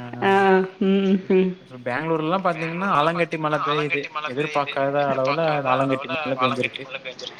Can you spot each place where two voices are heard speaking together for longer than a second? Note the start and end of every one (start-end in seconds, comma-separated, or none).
3.5-6.8